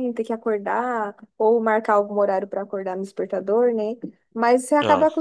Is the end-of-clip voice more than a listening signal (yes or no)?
no